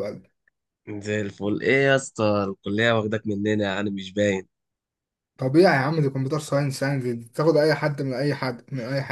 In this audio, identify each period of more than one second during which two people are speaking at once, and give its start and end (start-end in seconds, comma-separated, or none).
none